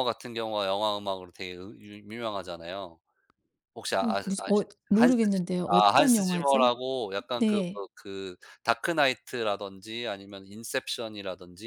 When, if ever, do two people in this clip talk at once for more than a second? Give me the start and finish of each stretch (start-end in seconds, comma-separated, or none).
4.0-6.7